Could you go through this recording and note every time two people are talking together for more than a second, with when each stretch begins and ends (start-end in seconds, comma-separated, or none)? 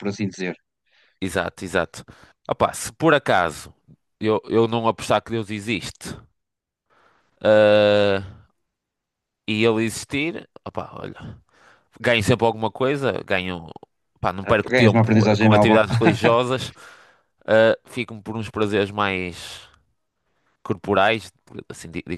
14.4-15.8